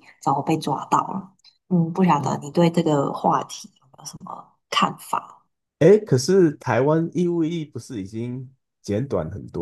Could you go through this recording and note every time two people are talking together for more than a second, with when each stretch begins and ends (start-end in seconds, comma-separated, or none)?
none